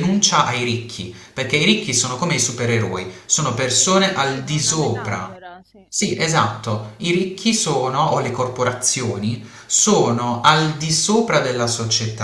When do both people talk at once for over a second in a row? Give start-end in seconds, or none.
3.8-5.4